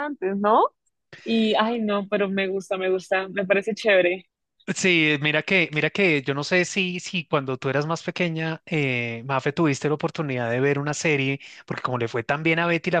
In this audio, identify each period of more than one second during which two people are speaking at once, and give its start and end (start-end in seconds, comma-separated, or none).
none